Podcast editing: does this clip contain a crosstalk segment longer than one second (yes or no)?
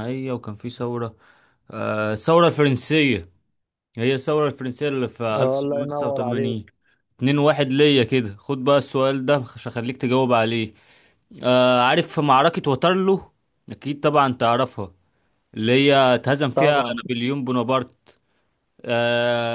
yes